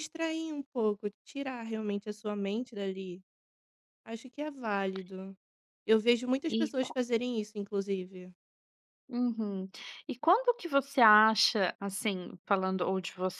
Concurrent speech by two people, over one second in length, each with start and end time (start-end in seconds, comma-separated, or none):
none